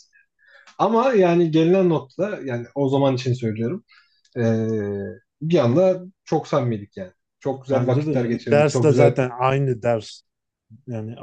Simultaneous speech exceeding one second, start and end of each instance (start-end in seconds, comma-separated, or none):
7.7-9.2